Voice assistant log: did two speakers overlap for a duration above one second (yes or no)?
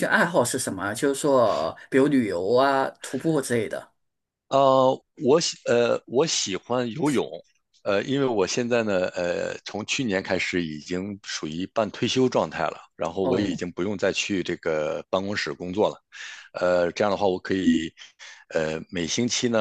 no